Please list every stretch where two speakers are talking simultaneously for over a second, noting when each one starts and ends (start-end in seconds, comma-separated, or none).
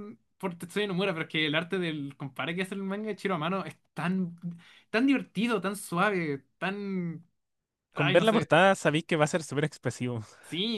none